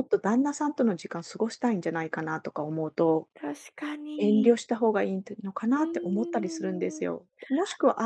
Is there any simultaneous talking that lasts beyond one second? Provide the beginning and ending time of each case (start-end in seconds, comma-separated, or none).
5.7-7.1